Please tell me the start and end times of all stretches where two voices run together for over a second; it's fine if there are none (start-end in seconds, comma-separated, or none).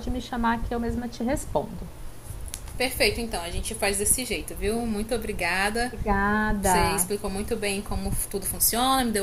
none